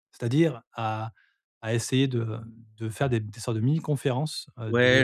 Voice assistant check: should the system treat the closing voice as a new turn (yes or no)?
yes